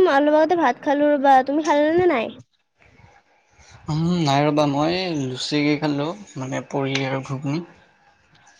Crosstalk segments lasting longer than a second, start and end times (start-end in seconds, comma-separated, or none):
none